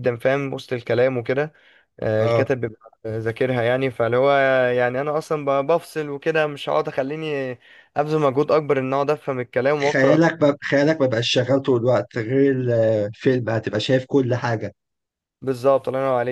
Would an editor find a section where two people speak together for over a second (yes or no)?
no